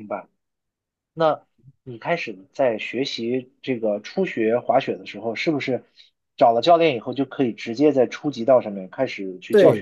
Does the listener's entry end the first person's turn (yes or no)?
yes